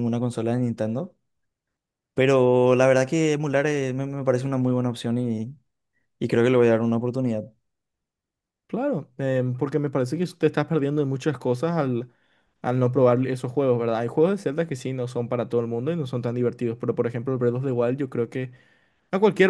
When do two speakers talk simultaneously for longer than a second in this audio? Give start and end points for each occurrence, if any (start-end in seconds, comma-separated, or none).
none